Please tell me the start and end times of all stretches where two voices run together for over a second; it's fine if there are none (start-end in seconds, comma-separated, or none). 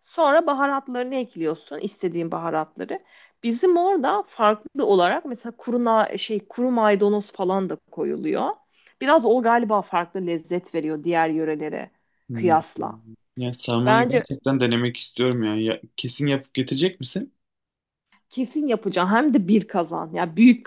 none